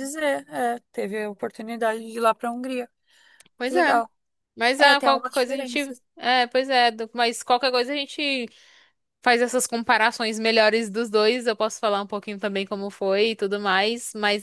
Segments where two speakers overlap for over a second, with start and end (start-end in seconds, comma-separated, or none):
4.8-6.0